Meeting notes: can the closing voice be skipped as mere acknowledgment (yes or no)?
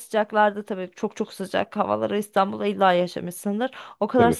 yes